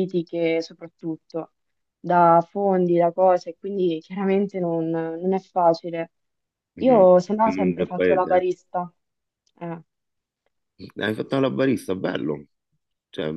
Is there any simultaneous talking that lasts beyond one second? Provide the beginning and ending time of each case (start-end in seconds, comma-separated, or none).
6.8-8.4